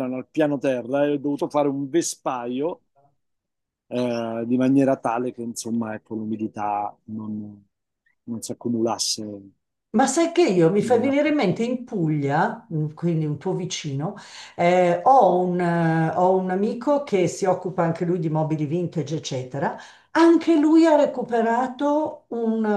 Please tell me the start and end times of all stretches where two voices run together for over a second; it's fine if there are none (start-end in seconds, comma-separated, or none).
none